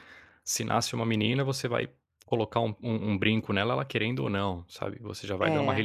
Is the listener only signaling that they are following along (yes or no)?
yes